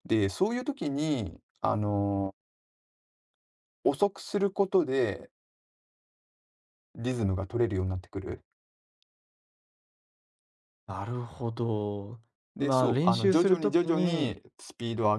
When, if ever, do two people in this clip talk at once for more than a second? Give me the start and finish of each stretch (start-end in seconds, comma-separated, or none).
12.6-14.4